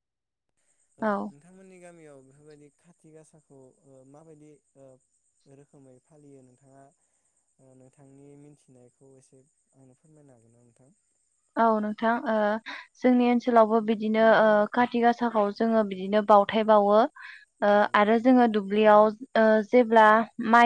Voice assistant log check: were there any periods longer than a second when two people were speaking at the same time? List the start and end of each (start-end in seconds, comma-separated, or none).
none